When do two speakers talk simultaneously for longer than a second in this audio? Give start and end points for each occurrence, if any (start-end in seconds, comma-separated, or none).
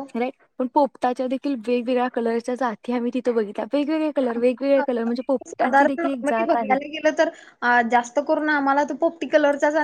5.5-6.7